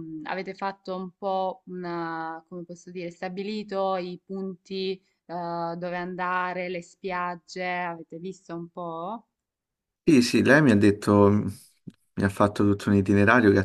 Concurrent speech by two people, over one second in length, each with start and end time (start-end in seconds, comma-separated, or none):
none